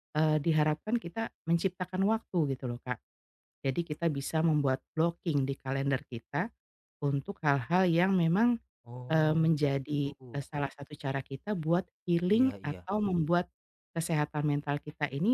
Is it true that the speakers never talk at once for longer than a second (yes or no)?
no